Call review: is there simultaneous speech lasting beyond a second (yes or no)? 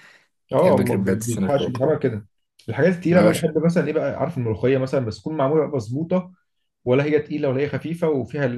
yes